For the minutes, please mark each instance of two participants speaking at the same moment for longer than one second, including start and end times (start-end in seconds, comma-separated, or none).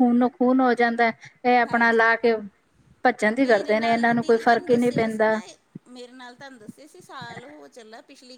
3.5-4.9